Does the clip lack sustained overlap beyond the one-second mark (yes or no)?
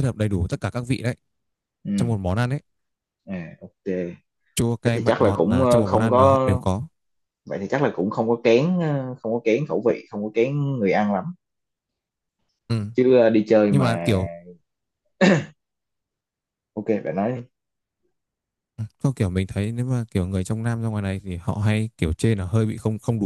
no